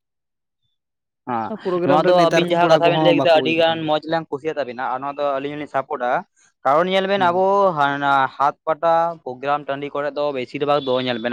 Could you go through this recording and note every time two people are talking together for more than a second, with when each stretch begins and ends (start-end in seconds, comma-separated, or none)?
1.9-3.8